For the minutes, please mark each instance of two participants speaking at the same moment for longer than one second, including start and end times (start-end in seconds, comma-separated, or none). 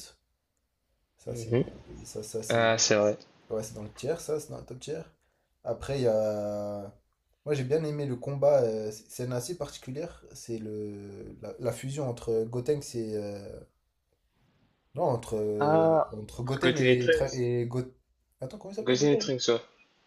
15.6-17.5